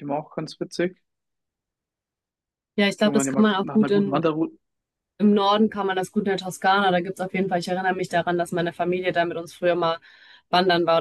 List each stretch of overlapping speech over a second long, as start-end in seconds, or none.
3.0-4.2